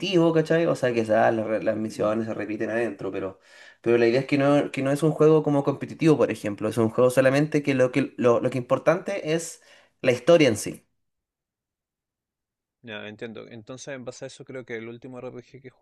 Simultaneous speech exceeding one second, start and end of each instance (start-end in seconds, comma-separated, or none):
none